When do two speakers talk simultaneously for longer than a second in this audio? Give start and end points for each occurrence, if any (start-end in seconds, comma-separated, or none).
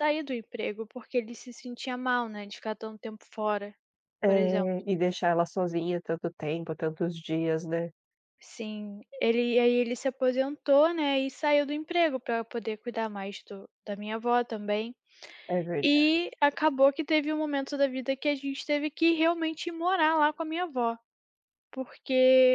none